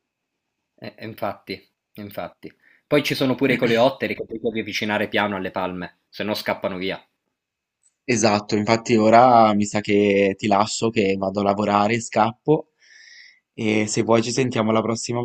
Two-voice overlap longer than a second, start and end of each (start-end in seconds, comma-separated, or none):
none